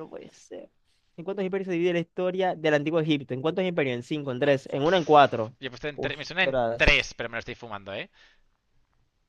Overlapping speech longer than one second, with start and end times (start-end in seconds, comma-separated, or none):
5.9-7.2